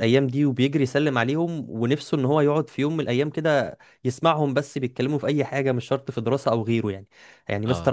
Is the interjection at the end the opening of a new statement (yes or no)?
no